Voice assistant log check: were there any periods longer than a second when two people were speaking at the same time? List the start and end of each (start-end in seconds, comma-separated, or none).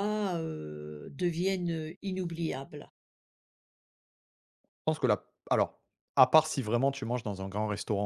none